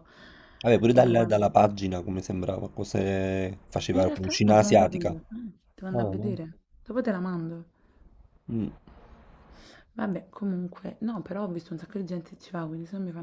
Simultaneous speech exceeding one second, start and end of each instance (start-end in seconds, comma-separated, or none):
3.9-5.2